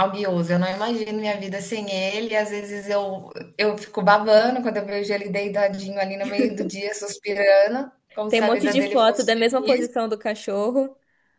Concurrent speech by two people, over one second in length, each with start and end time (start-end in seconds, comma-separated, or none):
8.3-9.9